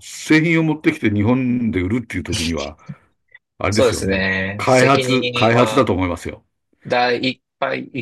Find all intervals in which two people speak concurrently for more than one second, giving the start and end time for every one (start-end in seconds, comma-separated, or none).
3.7-5.9